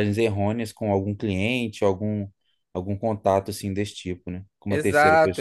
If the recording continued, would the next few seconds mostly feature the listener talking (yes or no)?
yes